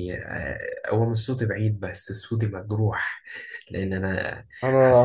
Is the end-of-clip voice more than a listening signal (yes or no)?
yes